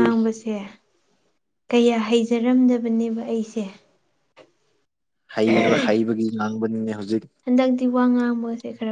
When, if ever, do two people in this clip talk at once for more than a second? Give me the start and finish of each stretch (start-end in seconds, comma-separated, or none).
none